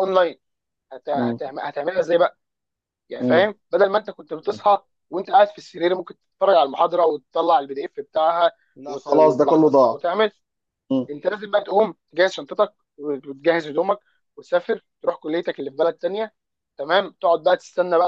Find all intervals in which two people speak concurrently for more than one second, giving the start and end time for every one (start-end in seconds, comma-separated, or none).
8.8-10.0